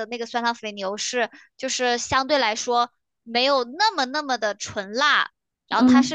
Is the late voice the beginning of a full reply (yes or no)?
no